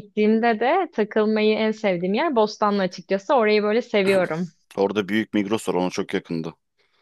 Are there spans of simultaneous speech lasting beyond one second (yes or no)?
no